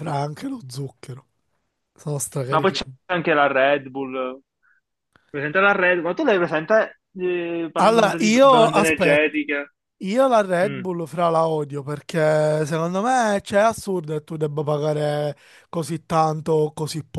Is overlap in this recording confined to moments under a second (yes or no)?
no